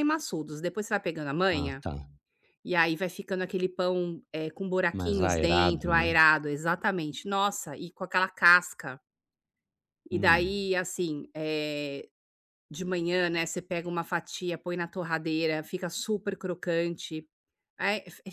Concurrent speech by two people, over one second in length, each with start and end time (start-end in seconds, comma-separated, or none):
4.9-6.1